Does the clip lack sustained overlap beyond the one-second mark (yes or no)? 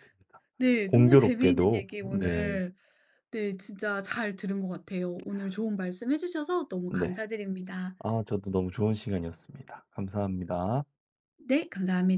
no